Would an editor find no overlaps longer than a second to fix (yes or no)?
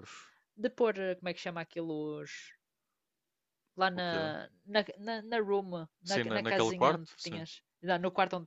no